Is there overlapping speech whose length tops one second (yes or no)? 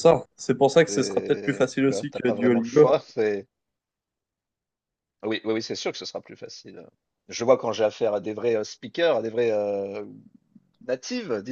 yes